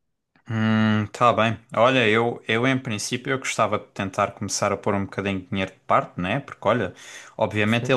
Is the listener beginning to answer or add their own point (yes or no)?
no